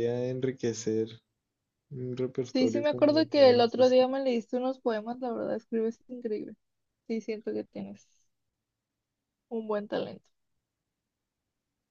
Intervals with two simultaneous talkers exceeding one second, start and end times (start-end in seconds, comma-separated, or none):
2.5-4.2